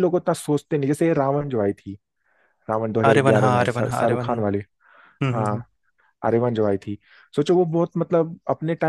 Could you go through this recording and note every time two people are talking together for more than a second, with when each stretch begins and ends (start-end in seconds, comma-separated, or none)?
3.1-4.6